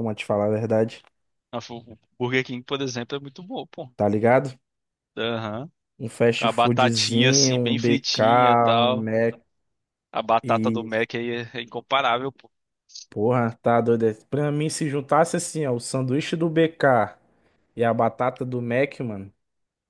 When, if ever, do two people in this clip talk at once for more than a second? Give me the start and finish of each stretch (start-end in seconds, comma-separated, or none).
6.4-9.1